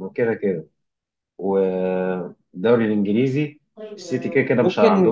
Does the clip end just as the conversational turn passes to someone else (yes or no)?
yes